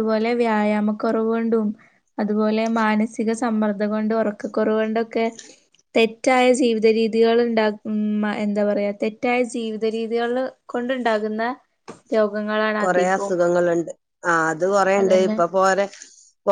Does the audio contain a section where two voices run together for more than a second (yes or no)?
no